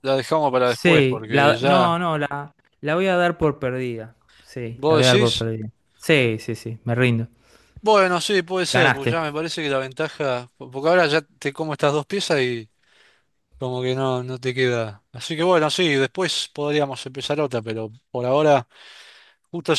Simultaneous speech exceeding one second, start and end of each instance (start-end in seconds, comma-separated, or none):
0.6-2.0